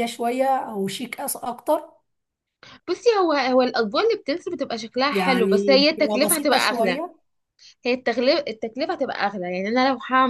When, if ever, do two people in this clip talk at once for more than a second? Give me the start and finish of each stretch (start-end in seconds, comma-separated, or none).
5.1-7.0